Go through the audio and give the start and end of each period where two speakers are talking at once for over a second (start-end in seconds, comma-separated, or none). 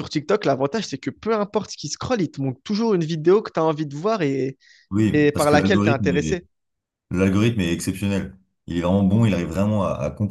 5.1-6.4